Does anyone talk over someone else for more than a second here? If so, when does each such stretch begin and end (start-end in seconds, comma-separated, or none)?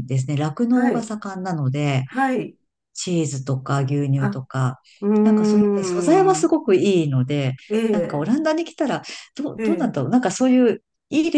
5.2-6.5